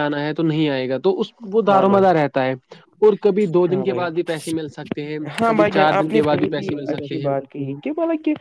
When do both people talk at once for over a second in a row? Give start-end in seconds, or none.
5.4-7.3